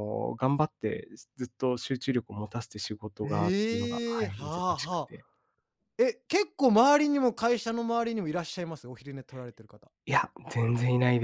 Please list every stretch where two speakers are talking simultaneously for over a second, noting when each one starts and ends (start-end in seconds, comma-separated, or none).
3.2-5.1